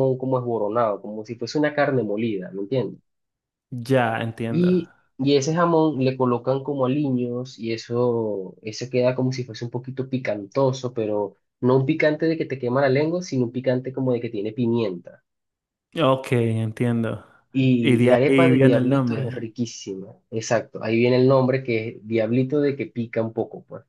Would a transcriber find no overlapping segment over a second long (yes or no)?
no